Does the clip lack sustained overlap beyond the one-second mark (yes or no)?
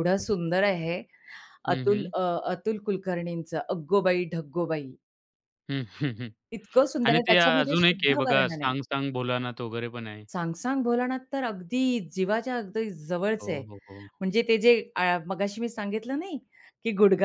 no